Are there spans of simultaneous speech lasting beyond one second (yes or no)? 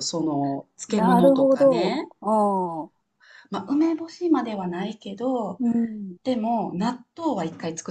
yes